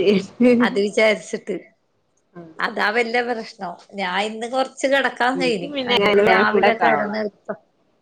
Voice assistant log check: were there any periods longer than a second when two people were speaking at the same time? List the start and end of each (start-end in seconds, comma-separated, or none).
5.4-7.2